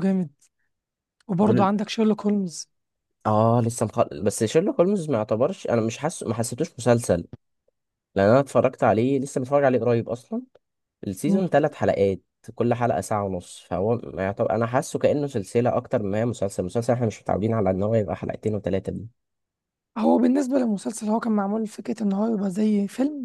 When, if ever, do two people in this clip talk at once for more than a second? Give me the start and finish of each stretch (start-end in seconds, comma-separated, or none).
none